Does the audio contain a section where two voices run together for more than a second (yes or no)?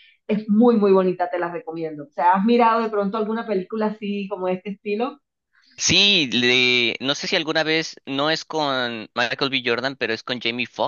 no